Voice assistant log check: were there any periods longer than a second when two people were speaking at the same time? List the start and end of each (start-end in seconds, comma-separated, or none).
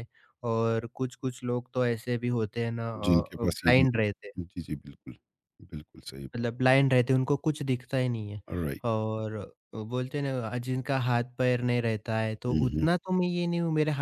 3.1-4.4